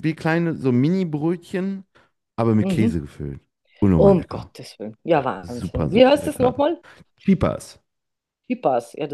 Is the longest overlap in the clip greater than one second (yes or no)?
yes